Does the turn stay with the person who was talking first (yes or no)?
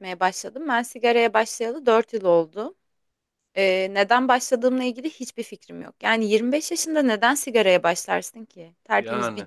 yes